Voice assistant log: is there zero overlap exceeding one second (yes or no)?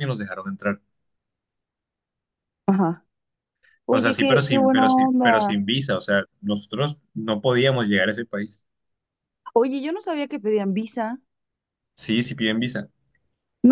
no